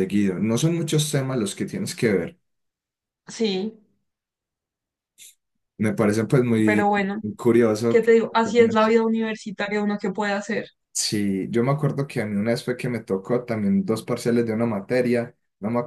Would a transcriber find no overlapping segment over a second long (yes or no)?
yes